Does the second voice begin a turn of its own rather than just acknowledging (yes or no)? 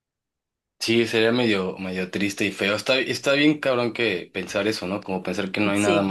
no